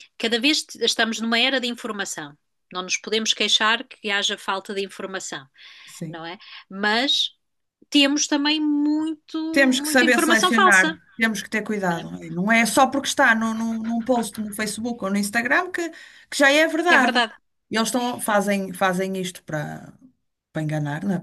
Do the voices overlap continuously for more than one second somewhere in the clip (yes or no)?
yes